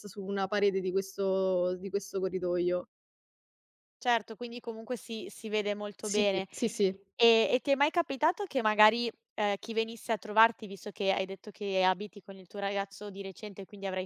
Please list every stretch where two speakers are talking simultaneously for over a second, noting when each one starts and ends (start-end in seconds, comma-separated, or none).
none